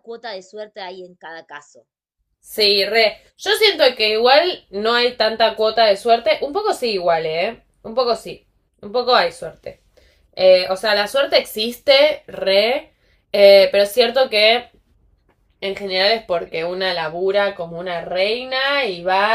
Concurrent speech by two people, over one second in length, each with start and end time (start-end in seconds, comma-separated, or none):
none